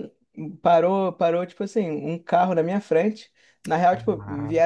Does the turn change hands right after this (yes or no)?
no